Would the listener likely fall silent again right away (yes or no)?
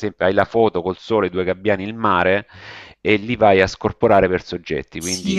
no